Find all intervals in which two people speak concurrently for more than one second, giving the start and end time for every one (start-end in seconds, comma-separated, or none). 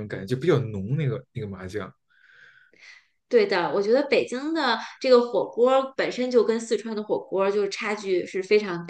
none